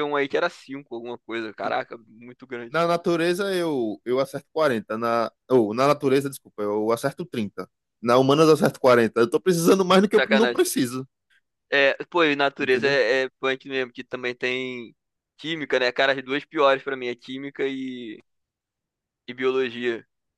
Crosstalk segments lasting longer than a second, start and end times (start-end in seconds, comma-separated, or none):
none